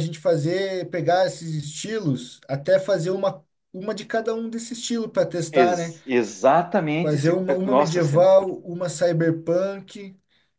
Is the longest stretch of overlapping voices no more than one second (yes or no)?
no